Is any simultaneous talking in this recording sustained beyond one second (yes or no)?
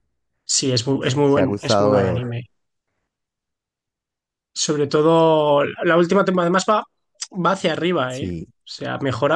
yes